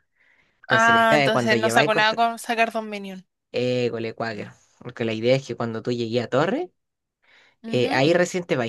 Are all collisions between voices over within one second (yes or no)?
no